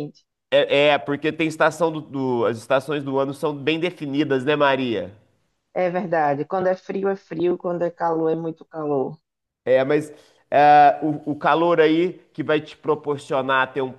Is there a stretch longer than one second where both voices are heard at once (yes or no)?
no